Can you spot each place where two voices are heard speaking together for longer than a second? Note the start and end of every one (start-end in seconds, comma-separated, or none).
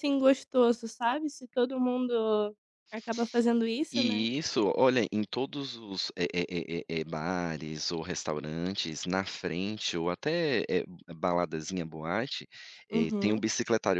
none